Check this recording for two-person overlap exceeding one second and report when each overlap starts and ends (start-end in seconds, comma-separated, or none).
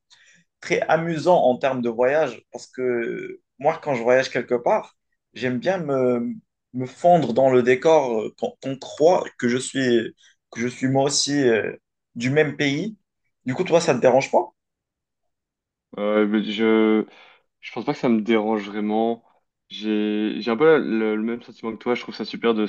none